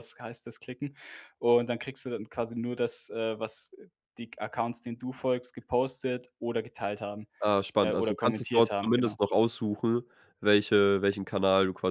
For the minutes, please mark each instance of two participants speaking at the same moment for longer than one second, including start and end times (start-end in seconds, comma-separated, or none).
7.8-9.2